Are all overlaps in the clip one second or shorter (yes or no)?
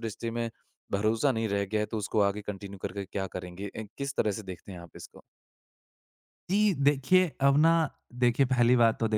yes